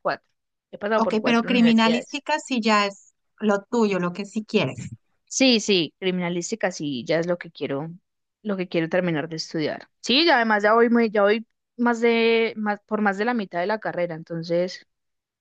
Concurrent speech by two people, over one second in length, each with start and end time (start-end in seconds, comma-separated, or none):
0.9-2.2